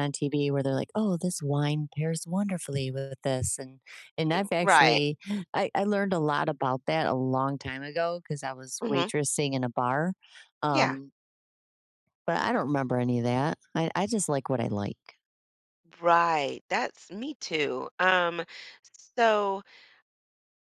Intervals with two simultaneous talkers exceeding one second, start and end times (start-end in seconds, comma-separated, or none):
none